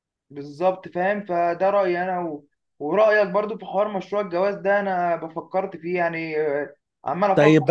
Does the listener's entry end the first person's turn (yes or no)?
yes